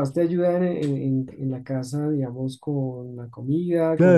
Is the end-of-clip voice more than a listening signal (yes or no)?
yes